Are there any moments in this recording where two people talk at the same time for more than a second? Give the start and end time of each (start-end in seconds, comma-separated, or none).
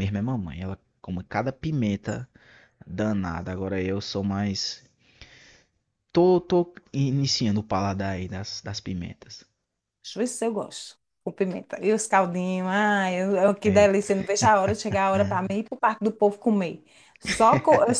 none